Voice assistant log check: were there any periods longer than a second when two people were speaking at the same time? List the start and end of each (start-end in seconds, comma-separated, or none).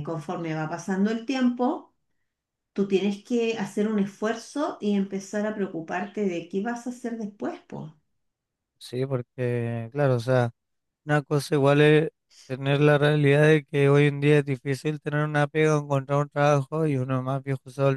none